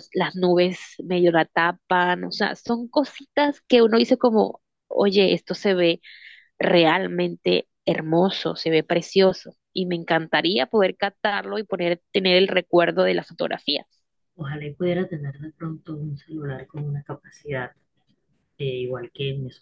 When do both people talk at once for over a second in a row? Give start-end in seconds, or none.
none